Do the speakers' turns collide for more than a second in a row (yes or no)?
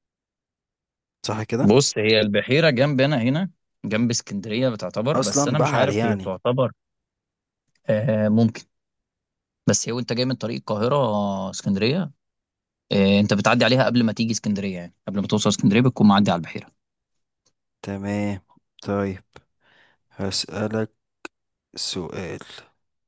yes